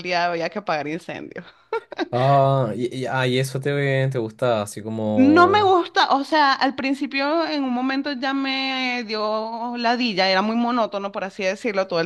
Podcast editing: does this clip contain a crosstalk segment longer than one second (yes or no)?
no